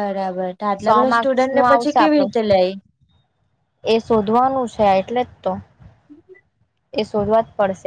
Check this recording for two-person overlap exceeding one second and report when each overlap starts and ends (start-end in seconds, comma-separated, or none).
0.8-2.3